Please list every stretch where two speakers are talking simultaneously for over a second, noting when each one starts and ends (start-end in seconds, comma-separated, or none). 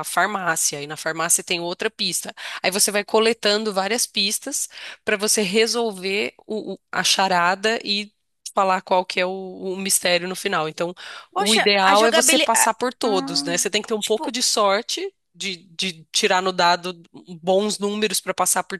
11.3-12.7